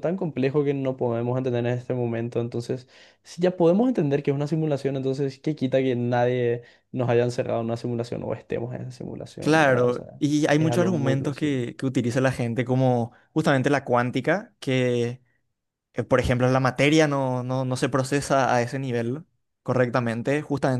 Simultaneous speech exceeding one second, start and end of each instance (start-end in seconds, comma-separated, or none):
9.4-11.6